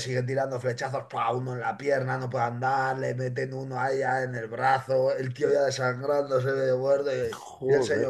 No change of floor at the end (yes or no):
yes